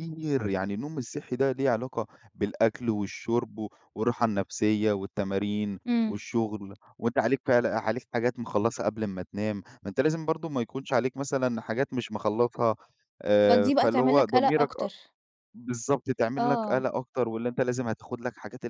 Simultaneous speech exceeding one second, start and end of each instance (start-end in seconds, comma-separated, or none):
13.4-14.9